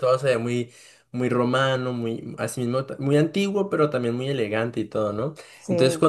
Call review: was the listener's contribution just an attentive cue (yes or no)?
yes